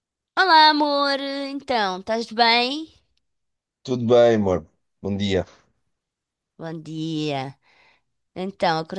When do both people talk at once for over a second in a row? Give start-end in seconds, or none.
none